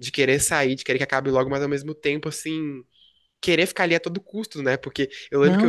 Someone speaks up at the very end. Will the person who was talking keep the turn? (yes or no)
yes